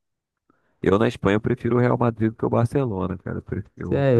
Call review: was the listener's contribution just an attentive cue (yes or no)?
no